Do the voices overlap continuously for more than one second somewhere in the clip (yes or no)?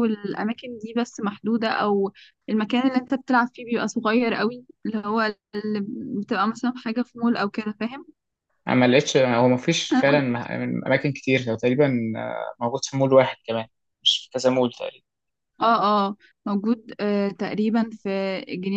no